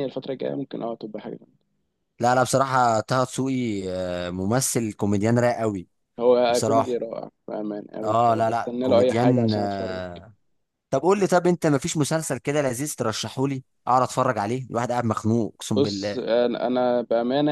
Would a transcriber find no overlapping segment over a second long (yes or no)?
no